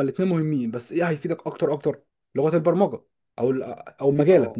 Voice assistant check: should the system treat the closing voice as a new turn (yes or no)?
no